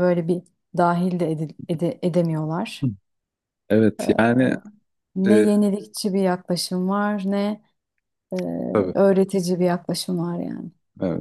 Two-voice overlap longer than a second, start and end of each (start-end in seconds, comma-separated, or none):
none